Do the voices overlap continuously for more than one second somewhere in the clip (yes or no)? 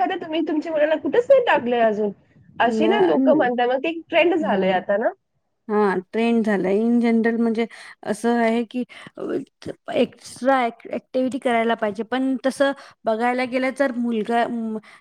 no